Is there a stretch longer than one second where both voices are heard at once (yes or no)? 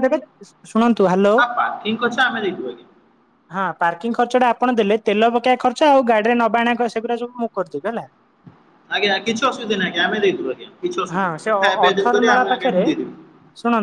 no